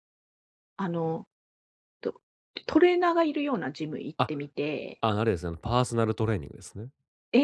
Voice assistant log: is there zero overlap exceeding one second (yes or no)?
yes